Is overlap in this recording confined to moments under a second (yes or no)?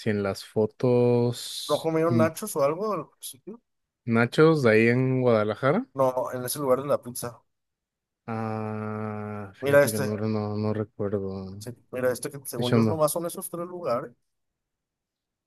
yes